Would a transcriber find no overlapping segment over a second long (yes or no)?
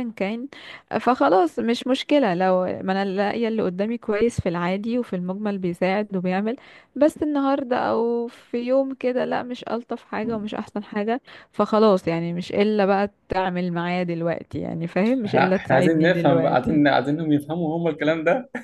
no